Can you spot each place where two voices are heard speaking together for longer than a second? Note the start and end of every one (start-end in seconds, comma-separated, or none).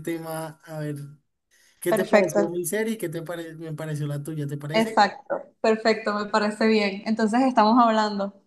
none